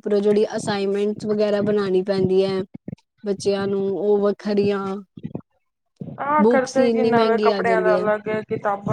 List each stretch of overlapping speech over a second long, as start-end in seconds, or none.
6.4-7.9